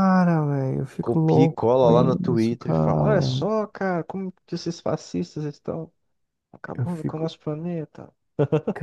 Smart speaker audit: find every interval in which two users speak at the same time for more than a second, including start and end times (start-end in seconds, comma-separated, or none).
1.0-3.5